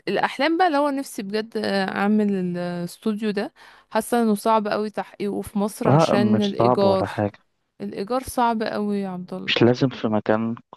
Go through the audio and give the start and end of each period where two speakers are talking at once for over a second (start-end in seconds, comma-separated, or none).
5.9-7.1